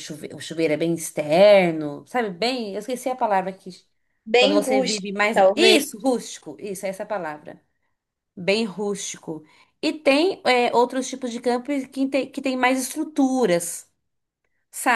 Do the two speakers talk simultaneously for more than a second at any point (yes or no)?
yes